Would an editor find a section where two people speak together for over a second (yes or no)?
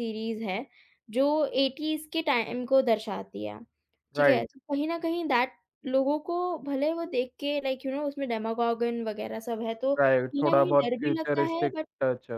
yes